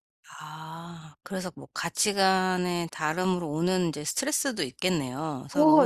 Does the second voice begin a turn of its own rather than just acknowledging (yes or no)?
yes